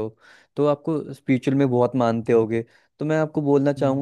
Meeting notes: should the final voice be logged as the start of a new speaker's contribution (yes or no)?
no